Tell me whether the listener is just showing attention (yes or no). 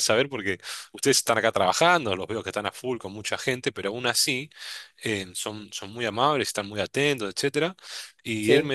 yes